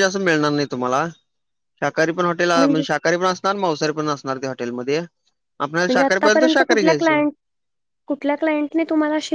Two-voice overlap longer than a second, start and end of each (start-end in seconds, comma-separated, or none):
5.9-7.2